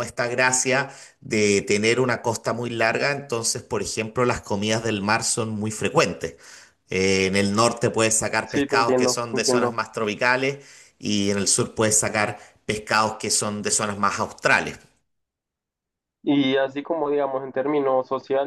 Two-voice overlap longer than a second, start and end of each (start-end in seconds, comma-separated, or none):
8.4-9.7